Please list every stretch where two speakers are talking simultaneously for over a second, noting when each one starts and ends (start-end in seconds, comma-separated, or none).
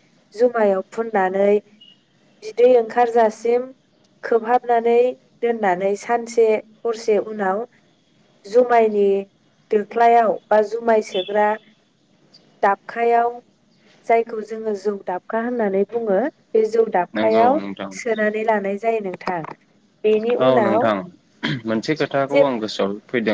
none